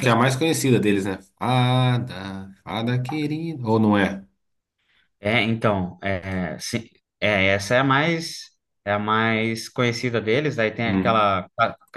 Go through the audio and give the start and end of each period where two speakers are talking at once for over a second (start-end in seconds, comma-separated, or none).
none